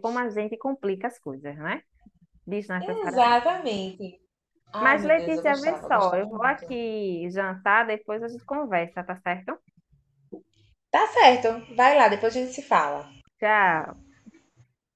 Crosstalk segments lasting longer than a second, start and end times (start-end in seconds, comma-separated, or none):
4.8-6.7